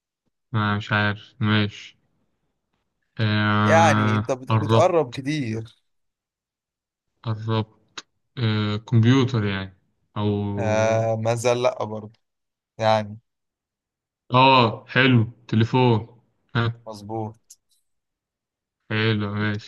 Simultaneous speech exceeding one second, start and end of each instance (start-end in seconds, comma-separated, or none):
3.6-5.2